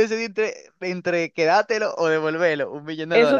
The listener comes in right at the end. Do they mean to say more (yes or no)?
yes